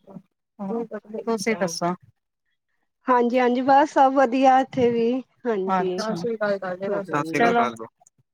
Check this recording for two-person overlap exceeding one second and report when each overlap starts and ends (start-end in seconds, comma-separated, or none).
5.8-7.5